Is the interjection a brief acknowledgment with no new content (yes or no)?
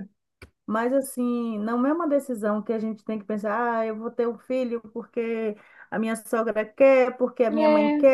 yes